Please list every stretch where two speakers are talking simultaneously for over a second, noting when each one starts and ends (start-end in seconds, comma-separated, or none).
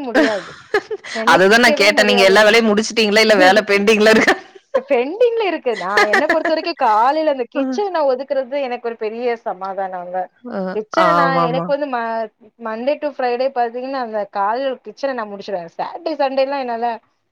1.3-2.8